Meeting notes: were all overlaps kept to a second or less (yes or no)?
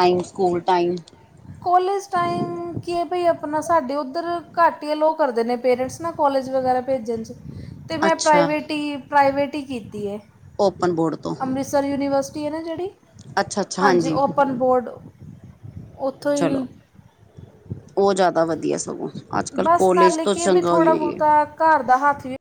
no